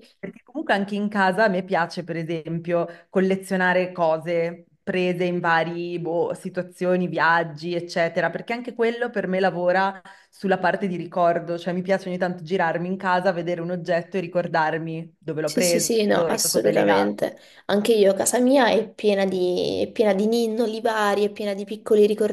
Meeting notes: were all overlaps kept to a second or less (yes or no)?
no